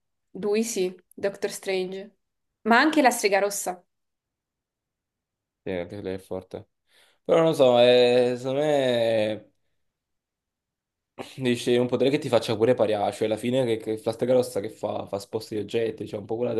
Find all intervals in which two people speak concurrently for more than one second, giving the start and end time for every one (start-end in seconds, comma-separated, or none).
none